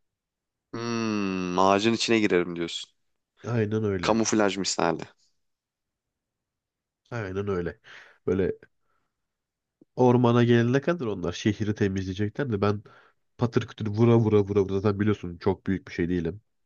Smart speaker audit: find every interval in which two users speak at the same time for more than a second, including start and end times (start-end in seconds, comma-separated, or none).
none